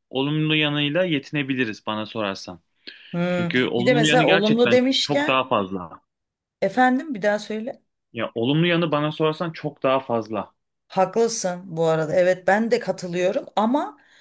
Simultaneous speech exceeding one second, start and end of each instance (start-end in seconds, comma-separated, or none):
3.3-5.4